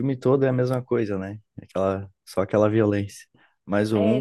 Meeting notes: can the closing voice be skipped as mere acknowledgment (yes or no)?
yes